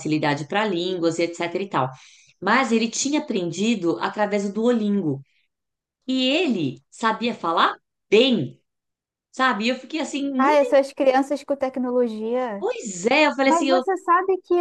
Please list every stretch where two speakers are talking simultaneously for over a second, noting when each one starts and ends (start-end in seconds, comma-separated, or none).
none